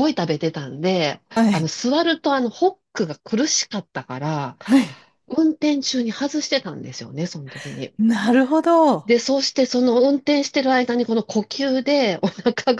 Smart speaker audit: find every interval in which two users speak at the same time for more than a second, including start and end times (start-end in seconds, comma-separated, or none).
none